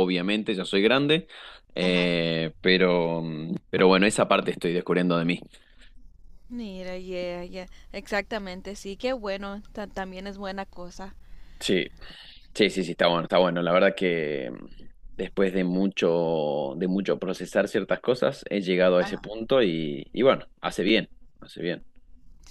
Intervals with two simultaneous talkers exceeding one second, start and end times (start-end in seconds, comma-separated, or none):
none